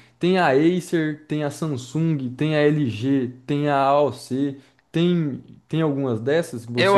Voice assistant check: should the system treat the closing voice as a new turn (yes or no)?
yes